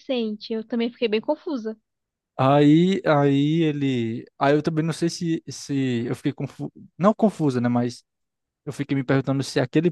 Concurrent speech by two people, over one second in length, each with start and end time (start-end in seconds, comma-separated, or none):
none